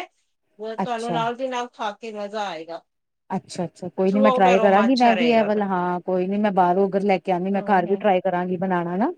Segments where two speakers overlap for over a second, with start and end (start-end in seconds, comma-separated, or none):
4.1-5.6